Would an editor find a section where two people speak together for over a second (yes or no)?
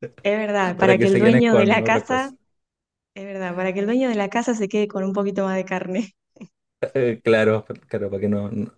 yes